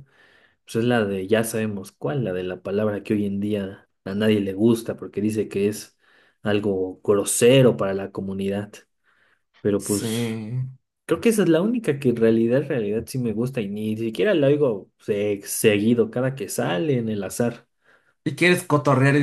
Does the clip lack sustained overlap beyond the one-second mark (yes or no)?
yes